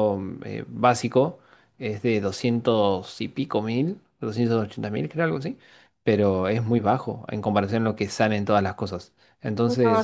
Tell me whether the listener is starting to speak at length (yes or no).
no